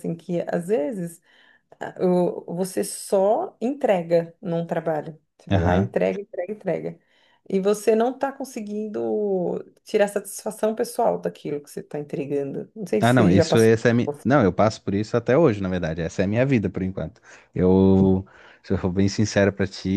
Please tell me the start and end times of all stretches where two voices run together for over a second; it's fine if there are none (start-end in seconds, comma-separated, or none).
13.0-14.4